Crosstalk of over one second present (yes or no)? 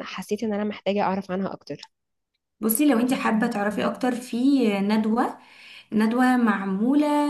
no